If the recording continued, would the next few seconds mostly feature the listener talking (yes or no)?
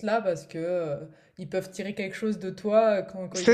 no